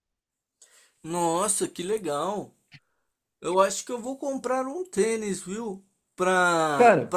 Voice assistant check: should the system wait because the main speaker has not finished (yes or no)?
yes